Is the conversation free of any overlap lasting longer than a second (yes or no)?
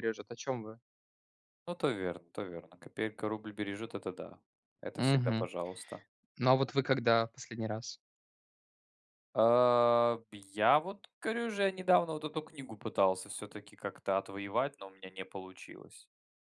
yes